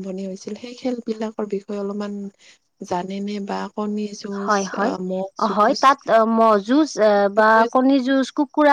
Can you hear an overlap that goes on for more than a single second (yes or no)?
no